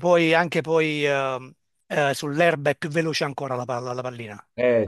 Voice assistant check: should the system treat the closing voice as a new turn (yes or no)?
no